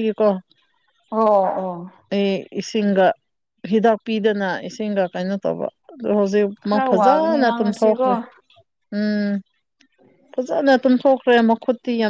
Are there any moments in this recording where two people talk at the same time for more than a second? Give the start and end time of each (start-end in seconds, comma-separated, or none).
6.7-8.0